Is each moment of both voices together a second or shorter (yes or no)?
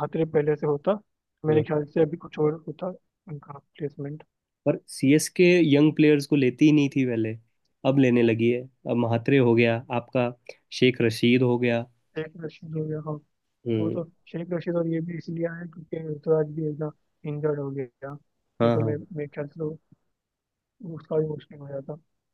yes